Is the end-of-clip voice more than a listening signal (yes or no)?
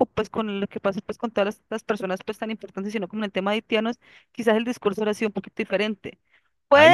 no